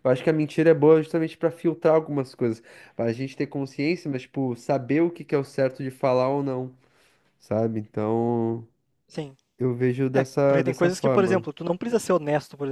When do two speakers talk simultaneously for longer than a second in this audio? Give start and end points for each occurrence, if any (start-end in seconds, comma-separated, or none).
10.1-11.5